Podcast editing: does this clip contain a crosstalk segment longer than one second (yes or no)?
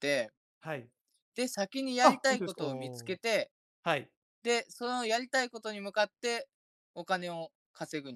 yes